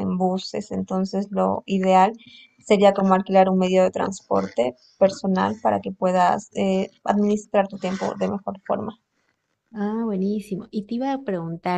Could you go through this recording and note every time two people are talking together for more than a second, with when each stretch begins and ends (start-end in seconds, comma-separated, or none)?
none